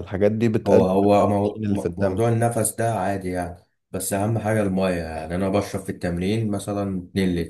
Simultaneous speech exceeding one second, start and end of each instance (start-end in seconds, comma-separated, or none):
0.7-2.3